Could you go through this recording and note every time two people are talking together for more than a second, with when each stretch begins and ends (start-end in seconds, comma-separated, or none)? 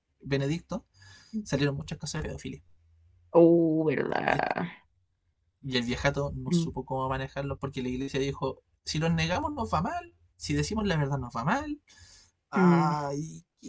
none